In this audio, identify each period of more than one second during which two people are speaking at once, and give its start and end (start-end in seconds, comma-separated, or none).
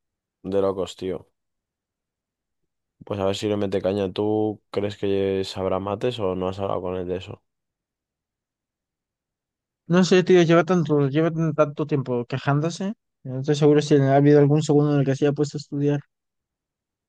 none